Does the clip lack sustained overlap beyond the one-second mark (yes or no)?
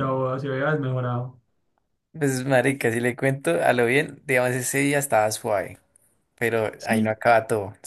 yes